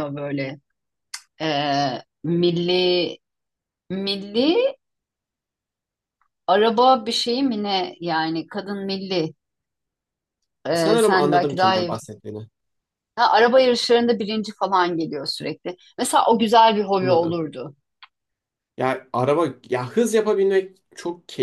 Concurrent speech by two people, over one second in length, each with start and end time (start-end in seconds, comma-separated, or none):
10.7-11.9